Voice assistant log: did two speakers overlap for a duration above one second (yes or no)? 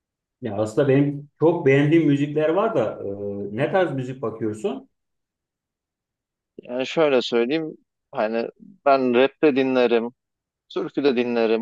no